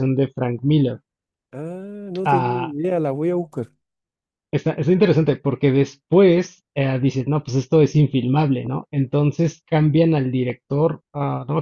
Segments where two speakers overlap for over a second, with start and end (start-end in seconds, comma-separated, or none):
none